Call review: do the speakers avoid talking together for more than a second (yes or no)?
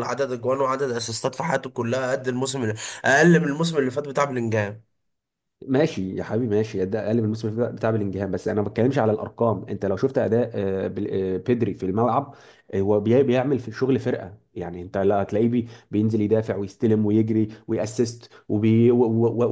yes